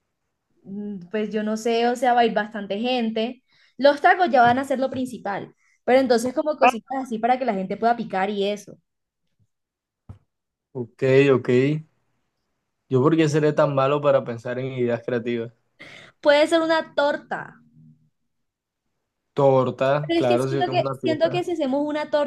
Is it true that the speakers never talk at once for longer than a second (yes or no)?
no